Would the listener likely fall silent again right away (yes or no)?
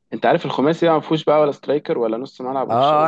no